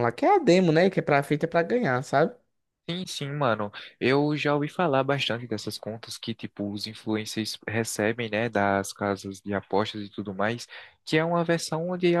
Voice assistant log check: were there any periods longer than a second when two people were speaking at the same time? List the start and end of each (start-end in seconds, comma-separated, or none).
none